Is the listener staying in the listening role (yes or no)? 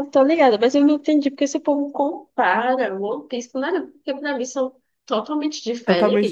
no